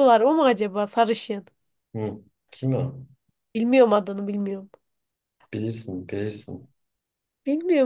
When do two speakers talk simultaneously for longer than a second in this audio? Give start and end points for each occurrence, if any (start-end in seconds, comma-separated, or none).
none